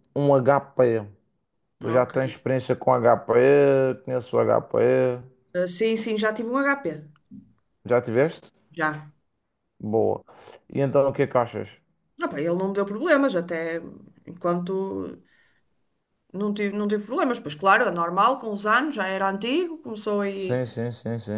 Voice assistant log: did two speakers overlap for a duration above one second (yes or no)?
no